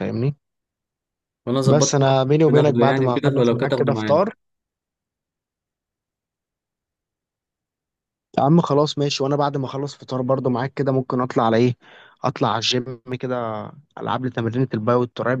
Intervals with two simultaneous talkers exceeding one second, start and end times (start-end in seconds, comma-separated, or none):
1.7-4.3